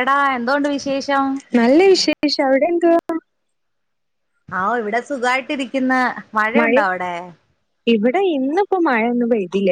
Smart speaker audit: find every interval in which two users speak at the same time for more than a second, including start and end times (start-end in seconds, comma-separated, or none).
none